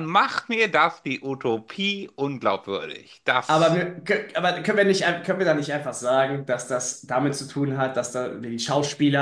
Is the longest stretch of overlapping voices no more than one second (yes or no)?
yes